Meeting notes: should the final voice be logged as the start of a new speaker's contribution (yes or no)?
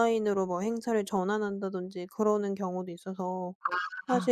no